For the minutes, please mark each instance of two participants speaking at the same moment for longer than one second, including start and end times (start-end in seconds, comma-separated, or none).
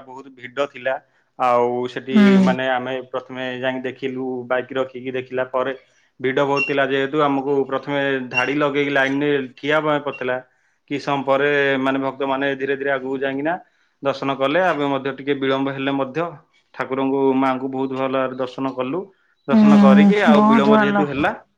19.5-20.9